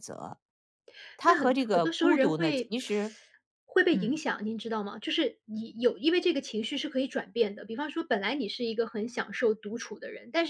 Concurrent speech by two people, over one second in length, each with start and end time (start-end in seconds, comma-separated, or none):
1.2-2.7